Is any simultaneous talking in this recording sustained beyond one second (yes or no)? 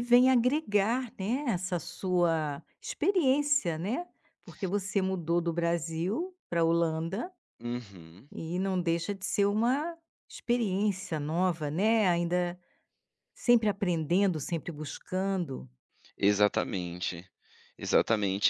no